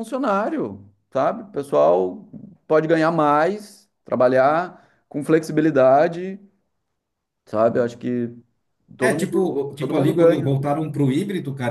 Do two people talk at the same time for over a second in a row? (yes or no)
yes